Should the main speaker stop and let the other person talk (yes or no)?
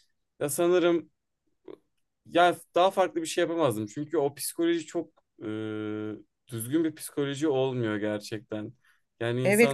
yes